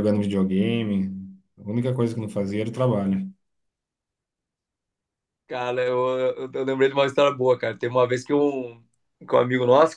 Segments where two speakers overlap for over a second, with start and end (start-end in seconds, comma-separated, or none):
none